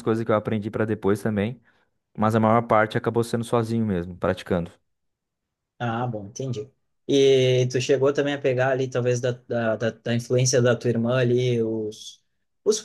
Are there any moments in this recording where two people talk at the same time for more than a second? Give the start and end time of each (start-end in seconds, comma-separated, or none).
none